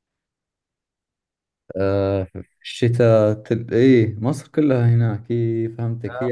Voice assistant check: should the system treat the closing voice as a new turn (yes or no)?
no